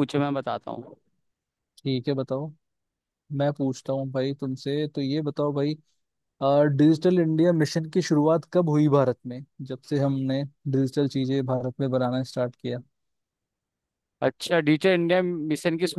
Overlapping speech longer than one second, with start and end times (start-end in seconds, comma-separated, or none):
none